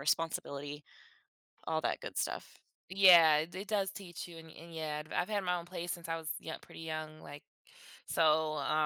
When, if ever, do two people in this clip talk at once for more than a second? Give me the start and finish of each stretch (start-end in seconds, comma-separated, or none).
none